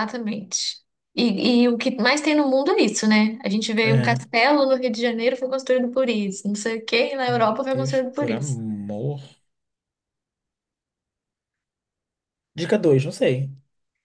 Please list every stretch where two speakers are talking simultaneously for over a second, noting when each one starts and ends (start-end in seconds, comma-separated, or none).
7.2-8.6